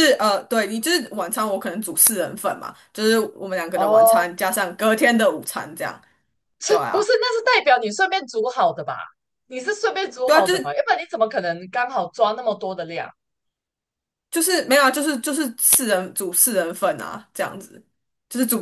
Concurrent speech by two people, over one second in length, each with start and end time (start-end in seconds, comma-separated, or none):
none